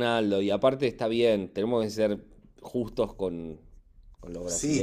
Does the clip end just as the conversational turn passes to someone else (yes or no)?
yes